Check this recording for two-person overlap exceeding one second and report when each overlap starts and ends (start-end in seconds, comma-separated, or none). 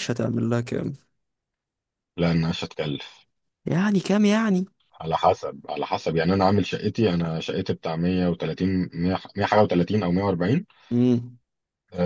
none